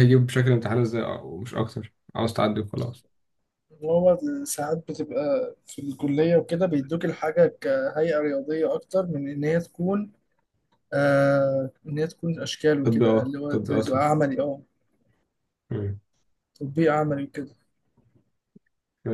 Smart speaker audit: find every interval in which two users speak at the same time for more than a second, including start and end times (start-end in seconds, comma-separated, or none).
12.8-14.0